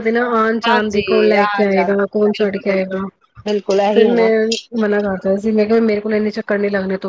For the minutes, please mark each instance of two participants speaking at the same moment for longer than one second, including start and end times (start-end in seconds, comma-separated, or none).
0.7-3.0